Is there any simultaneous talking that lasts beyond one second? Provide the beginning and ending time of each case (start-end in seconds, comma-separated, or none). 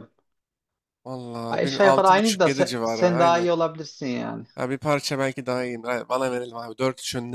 1.5-3.5